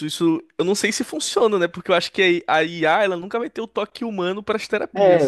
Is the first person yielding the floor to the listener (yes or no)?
yes